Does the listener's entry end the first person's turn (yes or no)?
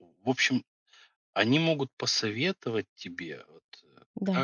no